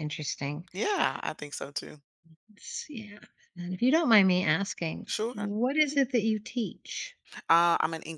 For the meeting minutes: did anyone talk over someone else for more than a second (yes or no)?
no